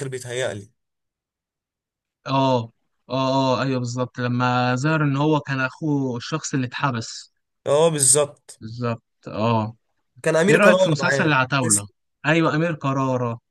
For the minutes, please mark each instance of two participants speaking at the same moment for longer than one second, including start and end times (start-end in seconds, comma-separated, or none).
10.5-11.9